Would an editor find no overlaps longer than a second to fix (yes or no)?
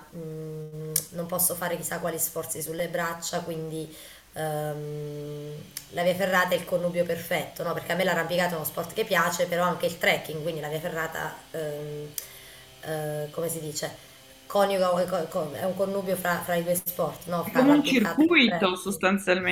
no